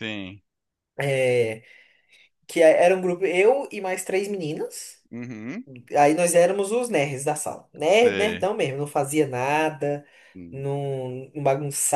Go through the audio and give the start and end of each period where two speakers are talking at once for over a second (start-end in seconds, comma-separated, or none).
none